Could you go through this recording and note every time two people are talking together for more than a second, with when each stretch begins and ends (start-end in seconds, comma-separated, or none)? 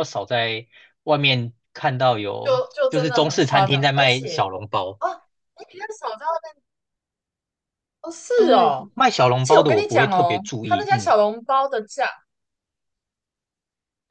2.4-4.5, 8.3-11.1